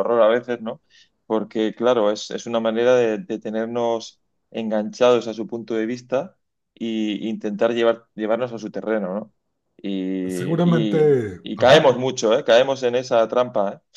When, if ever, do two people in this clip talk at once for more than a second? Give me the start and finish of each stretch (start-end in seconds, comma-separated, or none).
10.3-11.9